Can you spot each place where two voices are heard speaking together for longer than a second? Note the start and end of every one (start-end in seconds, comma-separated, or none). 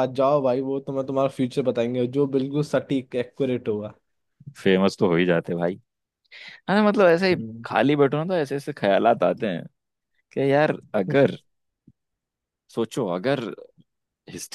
none